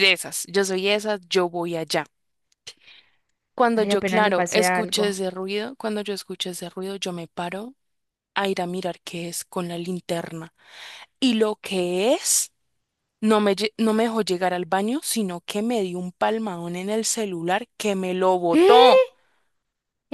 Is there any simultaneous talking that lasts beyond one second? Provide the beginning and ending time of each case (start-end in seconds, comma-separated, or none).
3.7-5.2